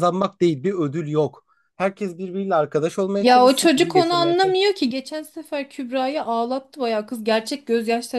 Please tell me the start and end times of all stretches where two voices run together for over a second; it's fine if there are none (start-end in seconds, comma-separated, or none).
3.2-4.6